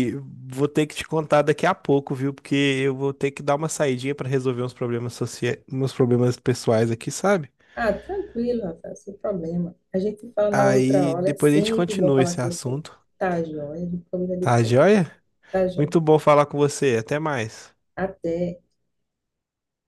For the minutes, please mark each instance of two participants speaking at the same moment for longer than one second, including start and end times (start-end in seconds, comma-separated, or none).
10.5-12.8